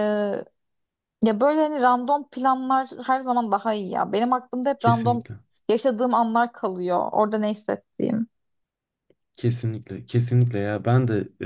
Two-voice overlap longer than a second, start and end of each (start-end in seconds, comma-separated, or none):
none